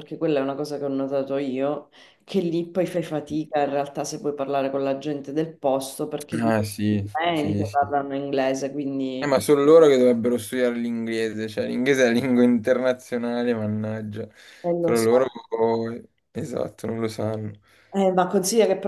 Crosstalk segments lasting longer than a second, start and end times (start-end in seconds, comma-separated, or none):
6.4-7.9